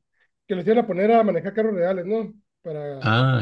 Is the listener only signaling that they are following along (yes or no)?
no